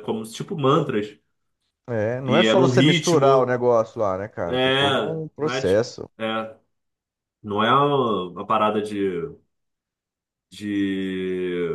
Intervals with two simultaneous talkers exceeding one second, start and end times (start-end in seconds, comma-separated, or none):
2.2-3.6, 4.5-6.1